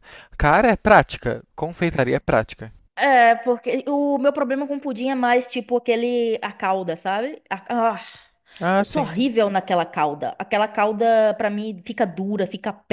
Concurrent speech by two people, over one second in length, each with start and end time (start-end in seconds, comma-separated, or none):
none